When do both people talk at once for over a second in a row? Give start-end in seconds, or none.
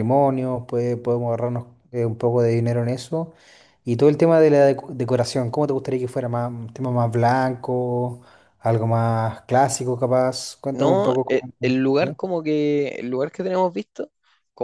10.7-12.3